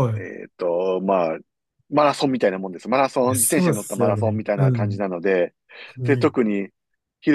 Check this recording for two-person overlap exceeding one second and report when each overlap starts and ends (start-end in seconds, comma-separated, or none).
3.2-5.0